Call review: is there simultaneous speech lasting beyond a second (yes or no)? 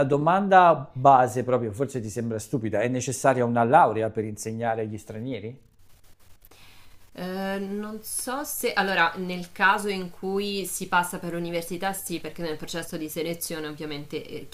no